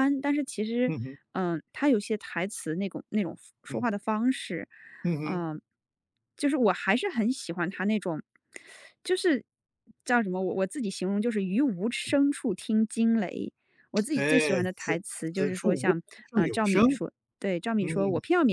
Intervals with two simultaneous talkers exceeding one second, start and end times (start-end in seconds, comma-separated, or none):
14.1-16.8